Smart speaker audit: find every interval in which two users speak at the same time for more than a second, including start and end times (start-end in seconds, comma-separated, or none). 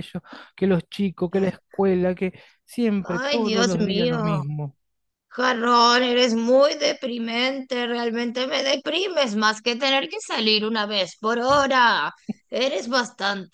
3.0-4.4